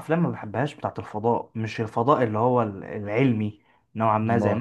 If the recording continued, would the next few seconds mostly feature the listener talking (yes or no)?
no